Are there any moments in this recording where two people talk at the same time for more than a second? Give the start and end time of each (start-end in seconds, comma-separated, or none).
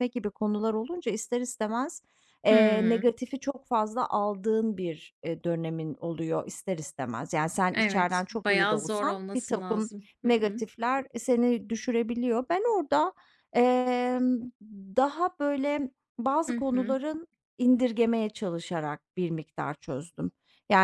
7.7-10.6